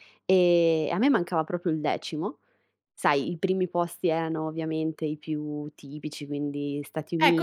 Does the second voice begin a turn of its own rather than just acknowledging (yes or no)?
yes